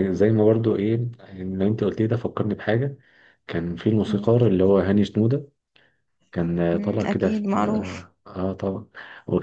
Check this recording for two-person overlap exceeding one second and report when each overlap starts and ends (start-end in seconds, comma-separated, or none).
6.7-8.1